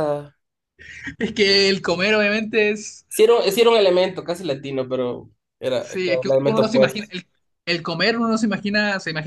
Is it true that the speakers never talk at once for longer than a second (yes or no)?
no